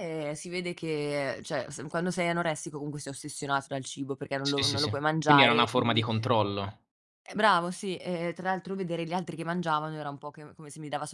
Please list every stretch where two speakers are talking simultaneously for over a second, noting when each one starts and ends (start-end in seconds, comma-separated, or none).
4.5-6.1